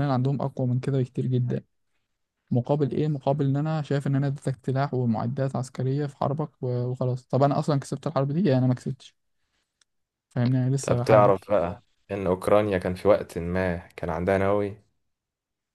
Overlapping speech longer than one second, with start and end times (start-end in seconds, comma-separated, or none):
none